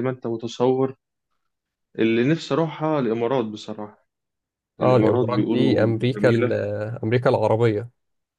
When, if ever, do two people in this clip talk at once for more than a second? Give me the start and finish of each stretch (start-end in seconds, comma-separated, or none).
4.8-6.5